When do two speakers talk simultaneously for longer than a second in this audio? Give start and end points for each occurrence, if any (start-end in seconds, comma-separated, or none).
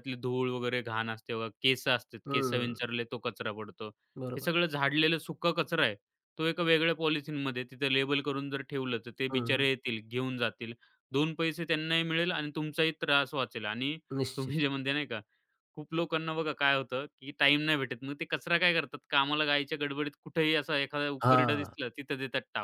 none